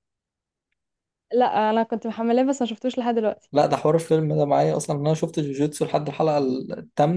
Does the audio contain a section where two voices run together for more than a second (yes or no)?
no